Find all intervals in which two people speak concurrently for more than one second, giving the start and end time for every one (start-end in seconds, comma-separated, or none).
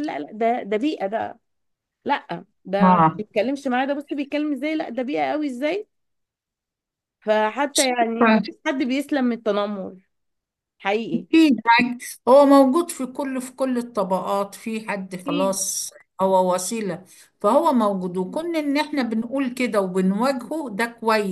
none